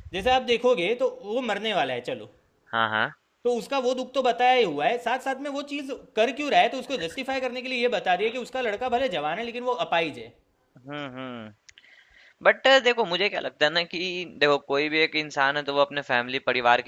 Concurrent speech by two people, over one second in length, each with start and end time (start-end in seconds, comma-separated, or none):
none